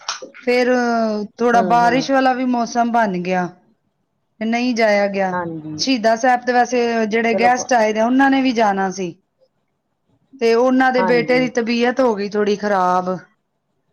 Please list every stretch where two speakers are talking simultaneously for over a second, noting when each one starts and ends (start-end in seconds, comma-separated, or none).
none